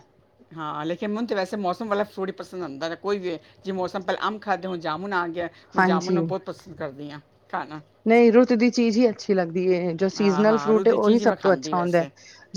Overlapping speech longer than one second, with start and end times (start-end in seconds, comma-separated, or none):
10.2-12.0